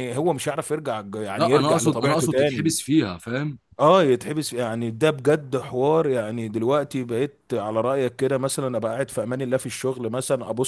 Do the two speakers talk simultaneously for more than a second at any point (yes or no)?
yes